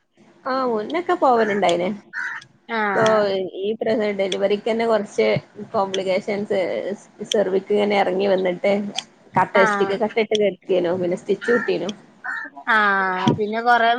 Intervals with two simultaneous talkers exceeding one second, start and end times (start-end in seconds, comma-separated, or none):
none